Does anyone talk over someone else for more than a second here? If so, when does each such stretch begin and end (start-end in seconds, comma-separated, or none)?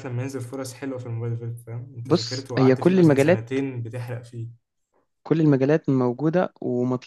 2.0-3.5